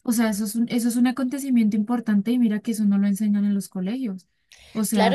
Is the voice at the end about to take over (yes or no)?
yes